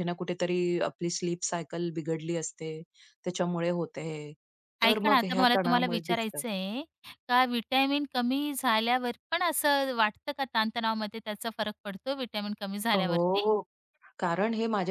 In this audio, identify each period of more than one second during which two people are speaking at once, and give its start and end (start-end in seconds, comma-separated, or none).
4.8-6.4